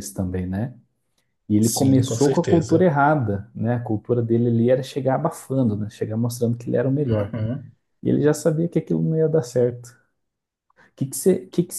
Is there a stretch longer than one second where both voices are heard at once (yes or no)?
yes